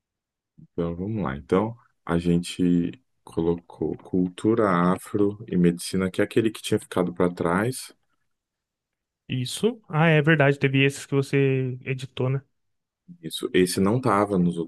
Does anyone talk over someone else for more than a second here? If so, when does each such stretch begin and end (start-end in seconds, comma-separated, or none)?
none